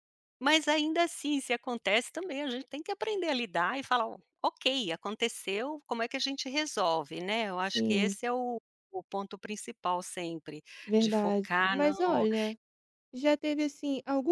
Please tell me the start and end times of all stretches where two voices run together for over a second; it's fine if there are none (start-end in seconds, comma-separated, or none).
11.0-12.2